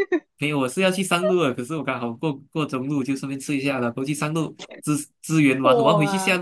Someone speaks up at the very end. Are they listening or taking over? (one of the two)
listening